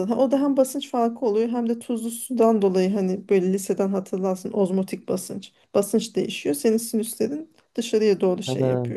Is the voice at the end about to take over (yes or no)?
no